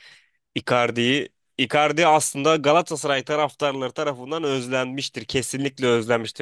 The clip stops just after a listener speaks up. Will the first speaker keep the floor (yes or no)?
yes